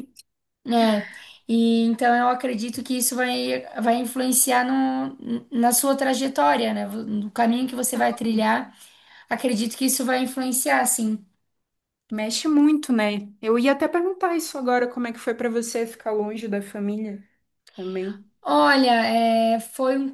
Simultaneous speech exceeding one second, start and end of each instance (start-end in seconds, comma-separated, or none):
none